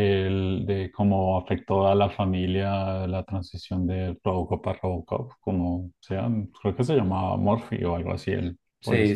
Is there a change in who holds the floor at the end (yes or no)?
yes